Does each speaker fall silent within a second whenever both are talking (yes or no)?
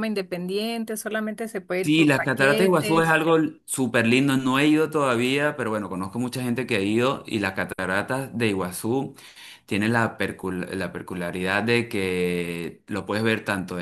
no